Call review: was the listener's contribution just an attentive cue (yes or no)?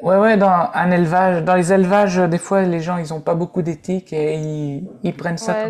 no